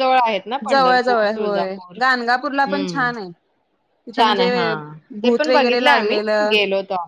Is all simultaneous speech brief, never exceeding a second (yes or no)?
no